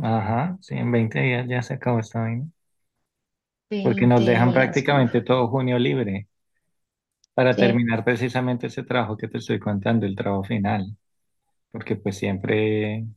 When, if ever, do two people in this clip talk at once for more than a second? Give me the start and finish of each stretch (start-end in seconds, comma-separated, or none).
3.8-5.1